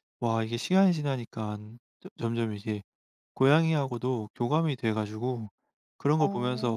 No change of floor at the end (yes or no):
yes